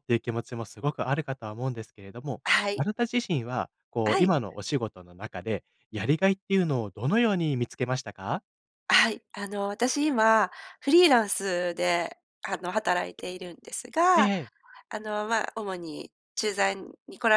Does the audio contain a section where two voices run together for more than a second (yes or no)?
no